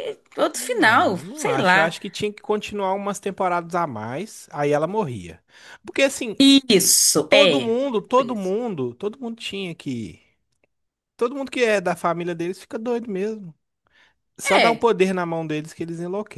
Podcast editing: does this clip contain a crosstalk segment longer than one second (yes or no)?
yes